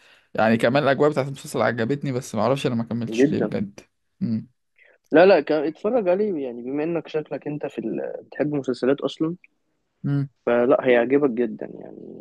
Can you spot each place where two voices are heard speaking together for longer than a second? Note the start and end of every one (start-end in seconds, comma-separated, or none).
none